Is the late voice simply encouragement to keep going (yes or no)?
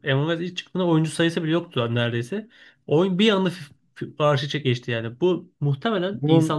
yes